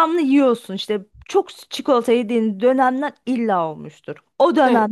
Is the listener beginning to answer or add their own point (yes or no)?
no